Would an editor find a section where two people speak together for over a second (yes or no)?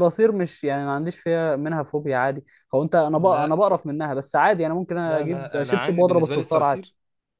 yes